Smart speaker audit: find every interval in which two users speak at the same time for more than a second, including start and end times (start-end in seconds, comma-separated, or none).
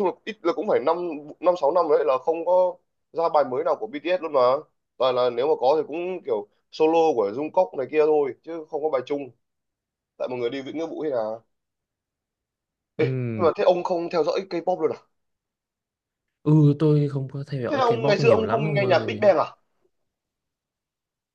17.7-19.3